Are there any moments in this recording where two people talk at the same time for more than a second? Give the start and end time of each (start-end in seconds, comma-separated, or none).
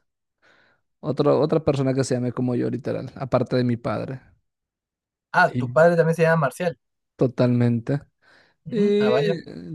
none